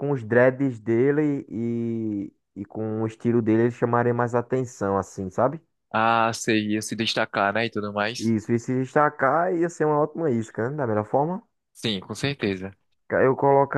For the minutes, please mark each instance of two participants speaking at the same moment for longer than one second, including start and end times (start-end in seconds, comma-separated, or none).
none